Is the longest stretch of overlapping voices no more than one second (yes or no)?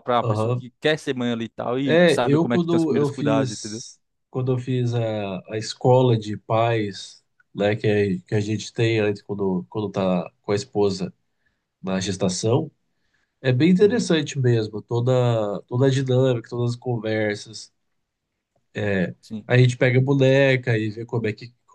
no